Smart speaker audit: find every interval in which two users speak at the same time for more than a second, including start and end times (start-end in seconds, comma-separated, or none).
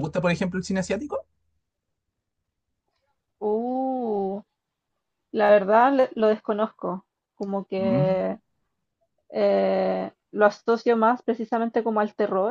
none